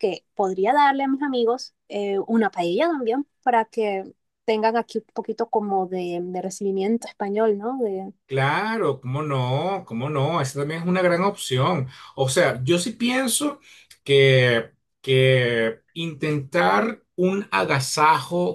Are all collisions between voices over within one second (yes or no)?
yes